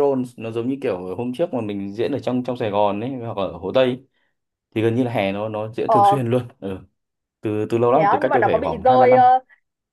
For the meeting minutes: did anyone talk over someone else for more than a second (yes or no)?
yes